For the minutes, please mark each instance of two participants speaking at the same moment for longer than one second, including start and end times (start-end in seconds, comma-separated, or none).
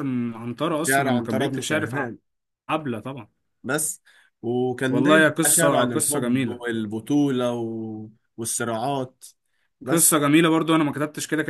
0.8-2.1, 4.9-6.6